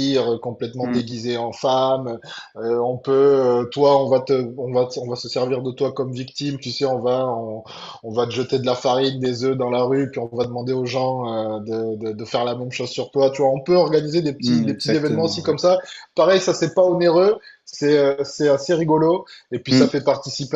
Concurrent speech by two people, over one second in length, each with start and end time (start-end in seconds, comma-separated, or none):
14.4-15.6